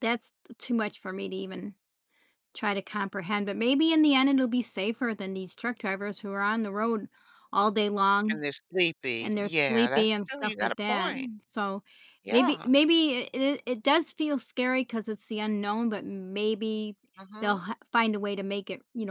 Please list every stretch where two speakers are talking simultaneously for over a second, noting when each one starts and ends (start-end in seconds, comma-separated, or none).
9.2-11.3